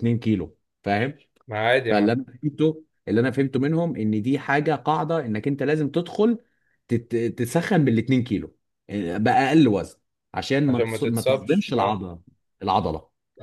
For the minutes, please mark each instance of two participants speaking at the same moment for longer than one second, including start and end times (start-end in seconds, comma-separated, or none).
10.7-12.0